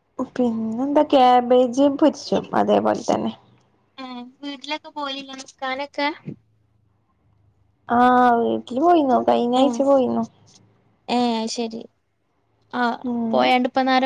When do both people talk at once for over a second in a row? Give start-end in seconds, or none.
none